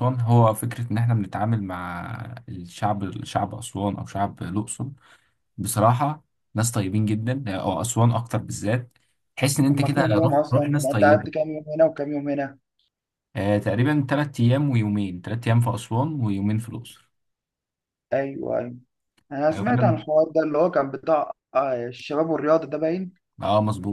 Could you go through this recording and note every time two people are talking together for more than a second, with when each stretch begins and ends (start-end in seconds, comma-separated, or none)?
9.7-11.3